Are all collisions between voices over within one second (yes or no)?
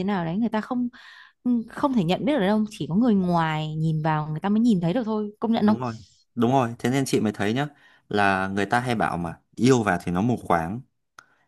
yes